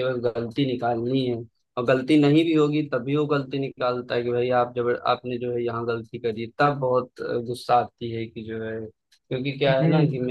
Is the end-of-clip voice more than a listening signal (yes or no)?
no